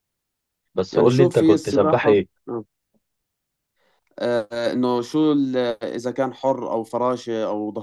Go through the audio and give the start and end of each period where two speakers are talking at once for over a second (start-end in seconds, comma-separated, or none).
0.9-2.3